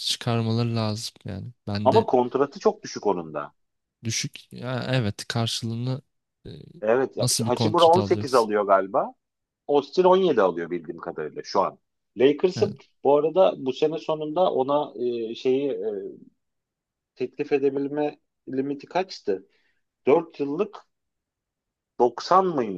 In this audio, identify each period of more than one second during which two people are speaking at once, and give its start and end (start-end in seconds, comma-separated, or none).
7.2-8.5